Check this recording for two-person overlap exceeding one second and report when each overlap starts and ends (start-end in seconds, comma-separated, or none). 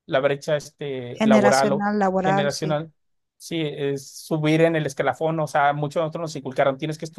1.1-2.8